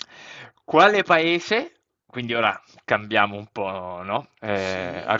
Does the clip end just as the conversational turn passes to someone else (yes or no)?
no